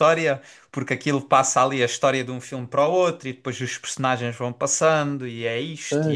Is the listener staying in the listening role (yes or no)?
no